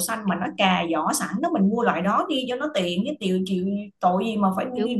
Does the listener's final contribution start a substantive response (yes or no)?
yes